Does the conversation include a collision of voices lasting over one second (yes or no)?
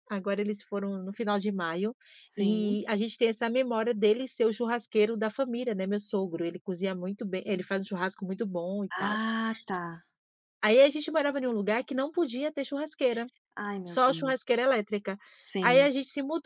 no